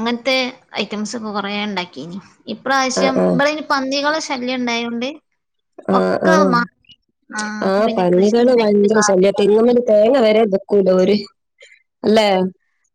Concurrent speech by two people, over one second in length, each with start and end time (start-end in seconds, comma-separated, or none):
7.7-9.4